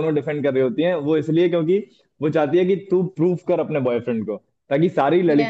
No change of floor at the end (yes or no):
yes